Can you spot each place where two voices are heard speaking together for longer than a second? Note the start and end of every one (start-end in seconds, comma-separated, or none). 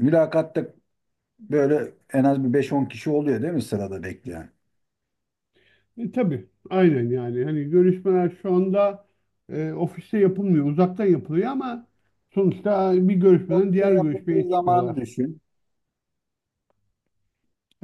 13.5-15.0